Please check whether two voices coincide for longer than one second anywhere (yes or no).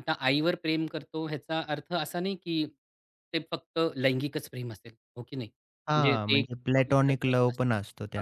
yes